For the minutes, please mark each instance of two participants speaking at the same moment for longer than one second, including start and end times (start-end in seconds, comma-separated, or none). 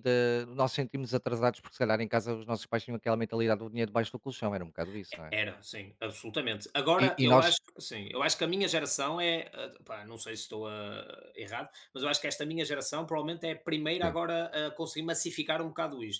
none